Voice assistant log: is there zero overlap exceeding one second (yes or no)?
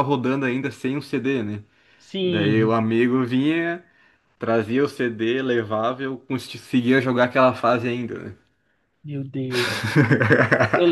yes